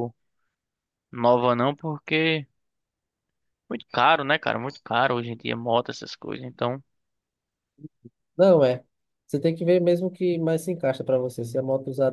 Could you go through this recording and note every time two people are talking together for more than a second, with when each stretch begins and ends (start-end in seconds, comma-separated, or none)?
none